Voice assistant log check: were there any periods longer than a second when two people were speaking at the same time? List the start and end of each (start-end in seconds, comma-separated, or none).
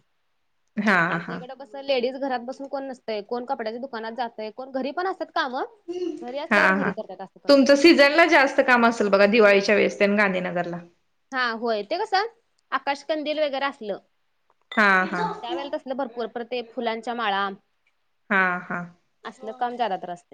none